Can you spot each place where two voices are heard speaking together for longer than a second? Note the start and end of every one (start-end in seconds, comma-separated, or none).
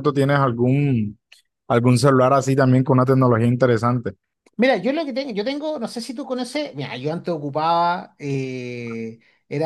none